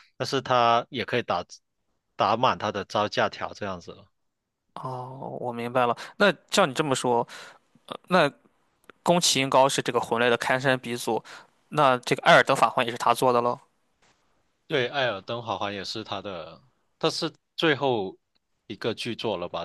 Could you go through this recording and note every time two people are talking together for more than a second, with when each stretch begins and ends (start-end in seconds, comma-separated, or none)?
none